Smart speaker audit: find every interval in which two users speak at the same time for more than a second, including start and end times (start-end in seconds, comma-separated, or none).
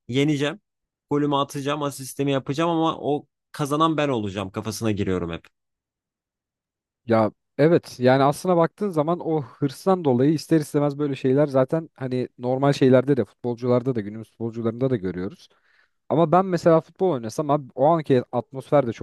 none